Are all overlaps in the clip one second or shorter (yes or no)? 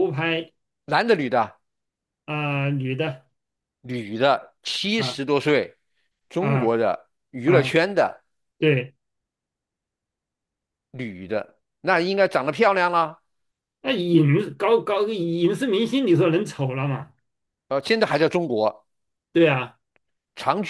yes